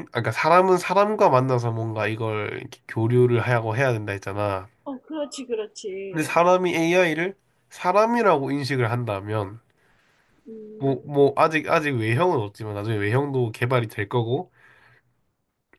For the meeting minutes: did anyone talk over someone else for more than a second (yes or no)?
no